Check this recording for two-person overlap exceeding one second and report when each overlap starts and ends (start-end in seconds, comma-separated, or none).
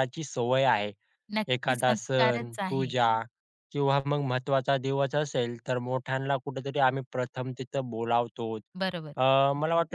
1.5-2.9